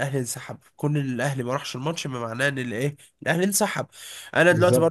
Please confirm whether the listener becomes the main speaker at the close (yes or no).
no